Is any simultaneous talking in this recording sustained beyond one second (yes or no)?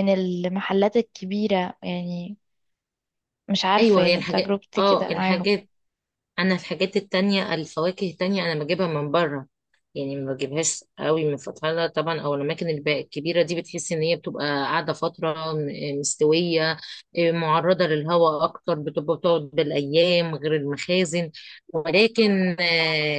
yes